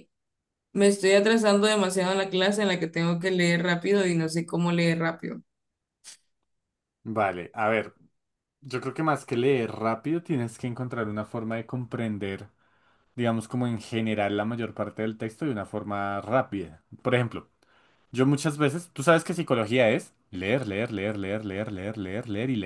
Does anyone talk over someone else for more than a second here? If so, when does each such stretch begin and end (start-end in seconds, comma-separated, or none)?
none